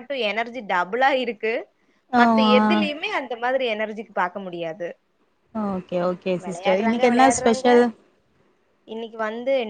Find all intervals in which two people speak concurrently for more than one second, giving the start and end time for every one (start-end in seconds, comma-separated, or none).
none